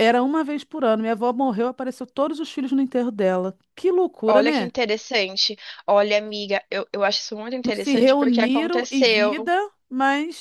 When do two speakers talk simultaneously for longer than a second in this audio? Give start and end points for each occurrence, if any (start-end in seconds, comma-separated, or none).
7.6-9.5